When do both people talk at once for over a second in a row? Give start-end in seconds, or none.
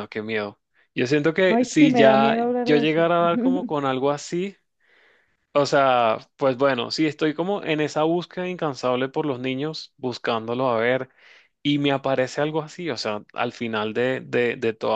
1.5-3.1